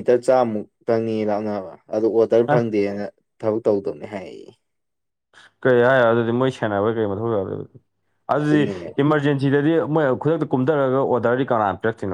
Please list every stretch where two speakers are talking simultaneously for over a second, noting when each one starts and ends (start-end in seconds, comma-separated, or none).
none